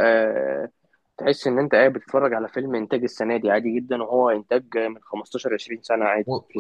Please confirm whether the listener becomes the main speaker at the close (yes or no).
yes